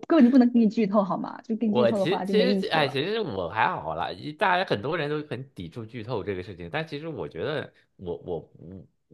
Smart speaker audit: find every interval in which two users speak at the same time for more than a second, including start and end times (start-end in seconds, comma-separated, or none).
1.6-3.0